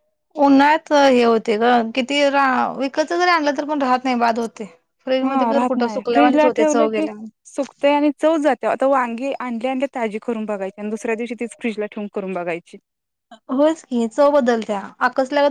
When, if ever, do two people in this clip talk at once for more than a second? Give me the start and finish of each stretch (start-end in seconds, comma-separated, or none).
5.2-7.1